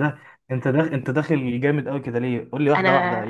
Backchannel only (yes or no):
yes